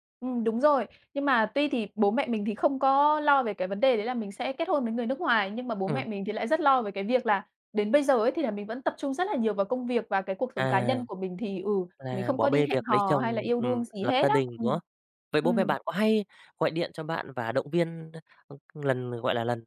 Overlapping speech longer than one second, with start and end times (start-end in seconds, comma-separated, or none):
12.1-14.8